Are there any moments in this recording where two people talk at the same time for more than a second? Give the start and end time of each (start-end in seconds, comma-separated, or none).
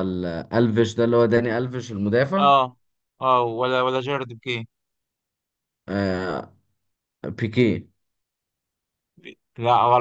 none